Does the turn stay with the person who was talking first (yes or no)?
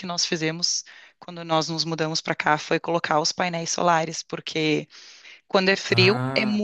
yes